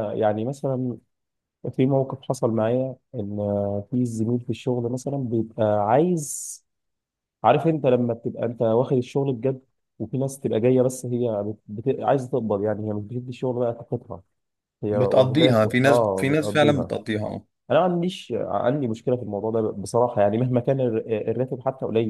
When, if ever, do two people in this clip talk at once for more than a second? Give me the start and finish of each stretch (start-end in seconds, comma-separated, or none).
14.9-16.9